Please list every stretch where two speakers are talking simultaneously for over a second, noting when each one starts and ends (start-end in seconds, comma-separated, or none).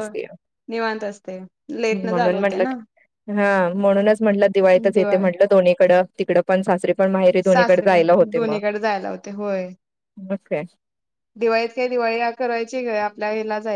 none